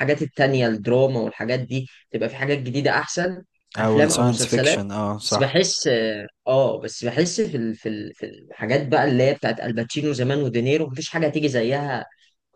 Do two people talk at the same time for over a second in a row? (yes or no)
yes